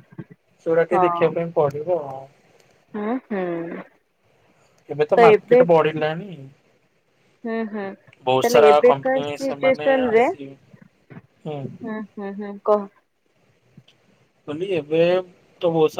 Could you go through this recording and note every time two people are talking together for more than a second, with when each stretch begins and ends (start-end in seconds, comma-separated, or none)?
8.4-10.2